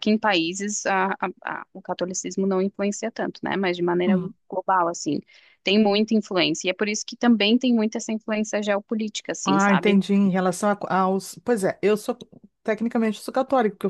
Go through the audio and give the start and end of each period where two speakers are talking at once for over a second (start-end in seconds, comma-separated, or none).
none